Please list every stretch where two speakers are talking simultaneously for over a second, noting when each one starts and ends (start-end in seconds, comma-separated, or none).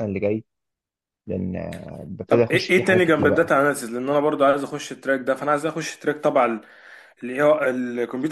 2.3-3.5